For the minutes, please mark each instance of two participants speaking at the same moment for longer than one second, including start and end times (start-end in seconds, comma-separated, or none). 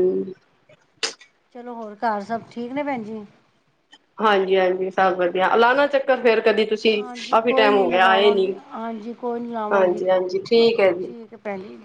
7.0-8.5